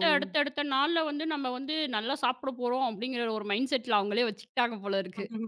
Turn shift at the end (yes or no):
yes